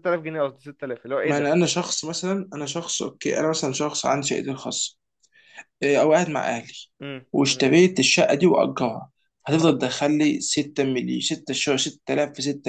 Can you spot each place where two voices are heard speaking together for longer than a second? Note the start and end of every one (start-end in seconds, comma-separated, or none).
none